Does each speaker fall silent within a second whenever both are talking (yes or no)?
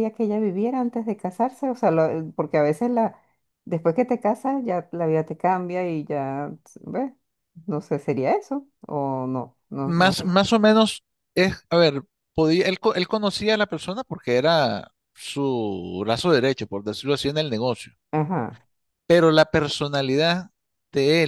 yes